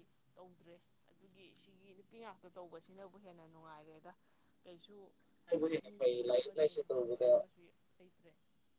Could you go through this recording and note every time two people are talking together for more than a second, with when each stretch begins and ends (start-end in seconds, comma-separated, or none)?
5.5-7.4